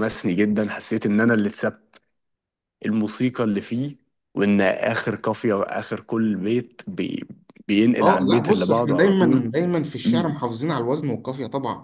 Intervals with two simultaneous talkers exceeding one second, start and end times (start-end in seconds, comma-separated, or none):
8.0-9.4